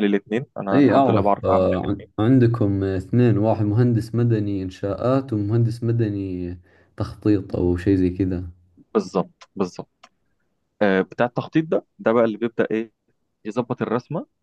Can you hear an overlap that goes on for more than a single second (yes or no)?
yes